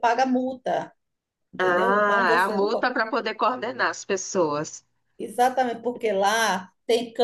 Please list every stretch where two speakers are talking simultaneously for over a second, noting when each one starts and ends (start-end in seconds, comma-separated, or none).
1.6-2.9